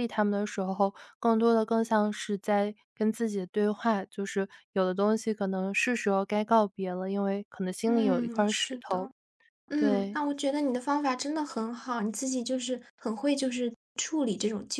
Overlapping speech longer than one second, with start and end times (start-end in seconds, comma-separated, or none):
7.9-9.1